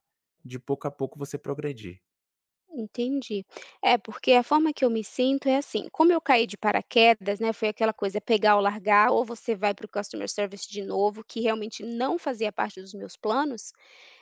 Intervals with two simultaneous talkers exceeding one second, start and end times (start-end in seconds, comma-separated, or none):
none